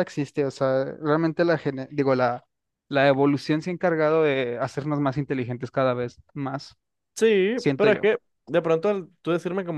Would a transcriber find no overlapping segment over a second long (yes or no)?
yes